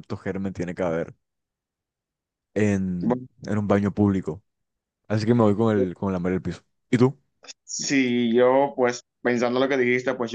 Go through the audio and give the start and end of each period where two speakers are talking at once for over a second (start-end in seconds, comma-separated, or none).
none